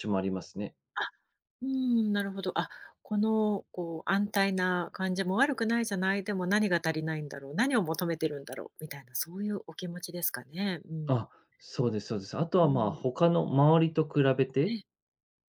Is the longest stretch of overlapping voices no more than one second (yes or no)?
yes